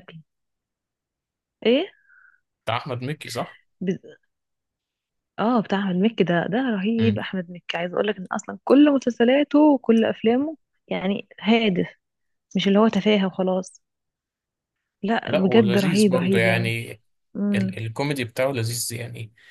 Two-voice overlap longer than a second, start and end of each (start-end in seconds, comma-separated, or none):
15.3-16.8